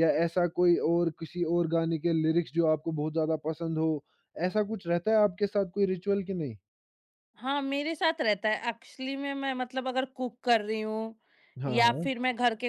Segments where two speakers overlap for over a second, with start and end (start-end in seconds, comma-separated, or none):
none